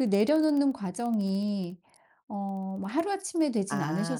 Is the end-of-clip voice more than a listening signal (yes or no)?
yes